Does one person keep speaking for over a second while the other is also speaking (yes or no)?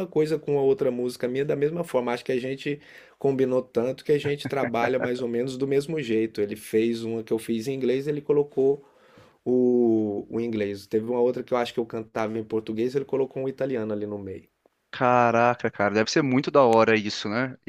no